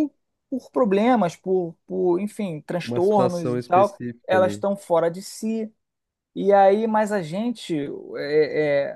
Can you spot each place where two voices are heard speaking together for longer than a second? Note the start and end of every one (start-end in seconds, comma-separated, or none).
2.8-4.6